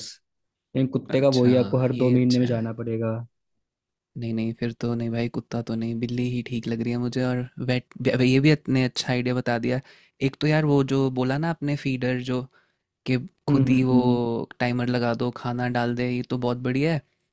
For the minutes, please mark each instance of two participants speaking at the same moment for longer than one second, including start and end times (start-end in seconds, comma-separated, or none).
1.1-2.8